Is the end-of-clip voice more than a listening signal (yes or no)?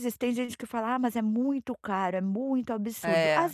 no